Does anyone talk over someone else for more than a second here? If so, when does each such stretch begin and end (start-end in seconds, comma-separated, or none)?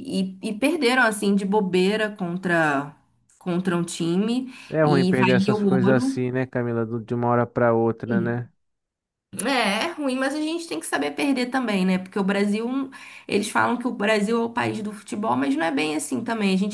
4.7-6.2